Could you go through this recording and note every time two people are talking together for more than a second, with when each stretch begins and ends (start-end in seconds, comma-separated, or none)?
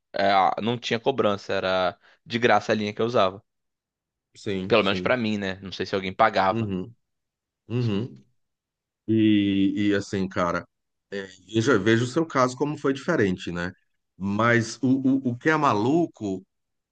none